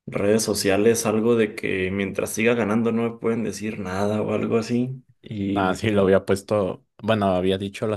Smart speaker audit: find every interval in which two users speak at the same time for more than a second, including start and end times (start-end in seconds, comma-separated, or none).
none